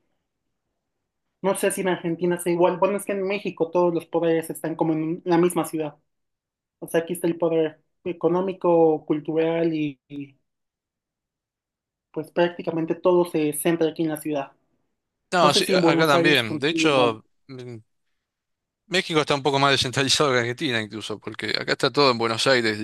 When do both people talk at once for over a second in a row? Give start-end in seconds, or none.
15.4-17.1